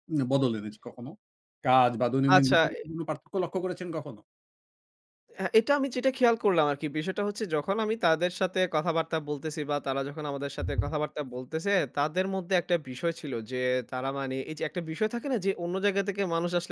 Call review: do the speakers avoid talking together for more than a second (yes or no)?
yes